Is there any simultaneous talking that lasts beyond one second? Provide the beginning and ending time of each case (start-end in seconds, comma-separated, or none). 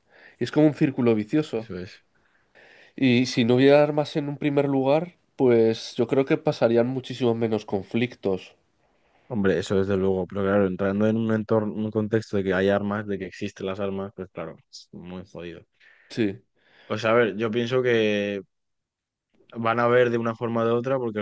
none